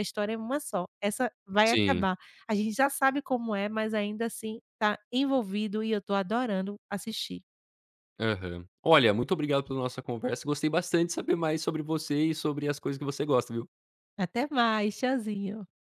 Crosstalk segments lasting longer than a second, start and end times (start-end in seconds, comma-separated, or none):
none